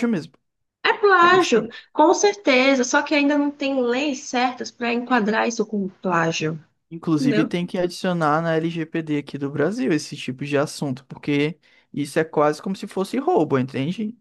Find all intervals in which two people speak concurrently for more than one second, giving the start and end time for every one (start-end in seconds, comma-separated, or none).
none